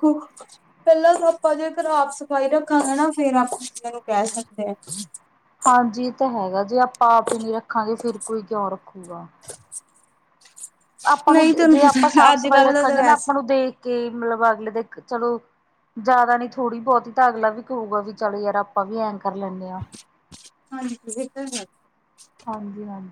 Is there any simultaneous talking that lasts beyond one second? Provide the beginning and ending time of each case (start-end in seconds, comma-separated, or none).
11.3-13.3